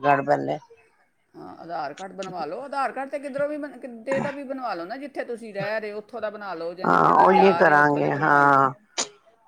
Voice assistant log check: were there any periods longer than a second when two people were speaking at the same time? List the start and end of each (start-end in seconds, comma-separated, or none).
6.8-8.5